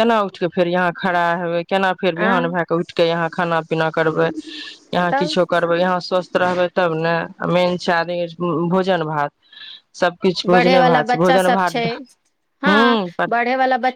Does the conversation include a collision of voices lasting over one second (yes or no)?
yes